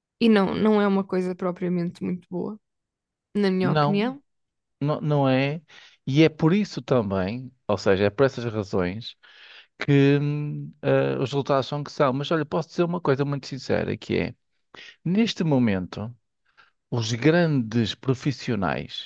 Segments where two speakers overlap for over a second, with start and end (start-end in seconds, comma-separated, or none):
none